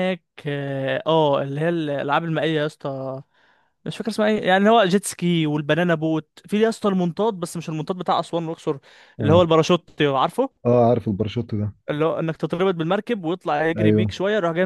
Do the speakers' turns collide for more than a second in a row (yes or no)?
no